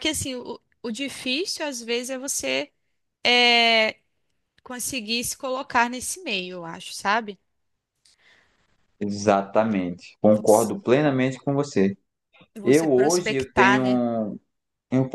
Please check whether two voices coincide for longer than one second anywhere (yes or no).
yes